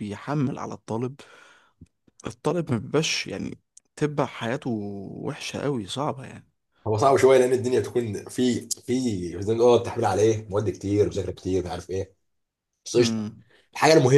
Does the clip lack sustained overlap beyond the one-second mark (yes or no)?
yes